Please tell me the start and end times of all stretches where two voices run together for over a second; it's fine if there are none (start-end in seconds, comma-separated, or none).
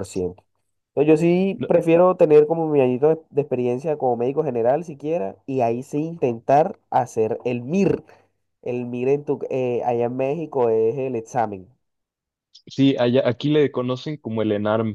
none